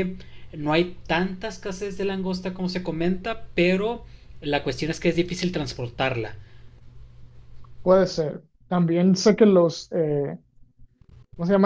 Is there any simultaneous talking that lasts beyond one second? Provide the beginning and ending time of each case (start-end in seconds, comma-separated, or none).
none